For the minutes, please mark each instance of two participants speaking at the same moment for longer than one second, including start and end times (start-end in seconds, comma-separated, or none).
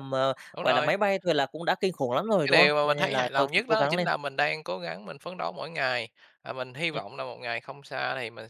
2.4-4.1